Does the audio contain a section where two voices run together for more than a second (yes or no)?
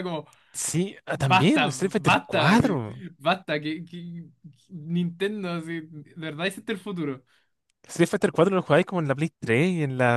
yes